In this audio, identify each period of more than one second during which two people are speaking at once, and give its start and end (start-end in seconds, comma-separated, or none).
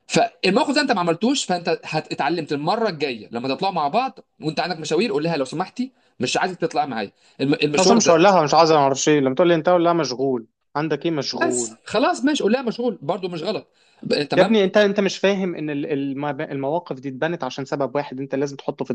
none